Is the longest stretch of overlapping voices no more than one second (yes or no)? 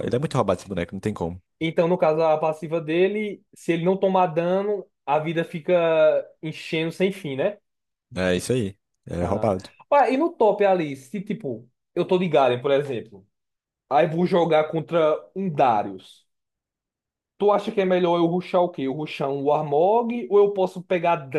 yes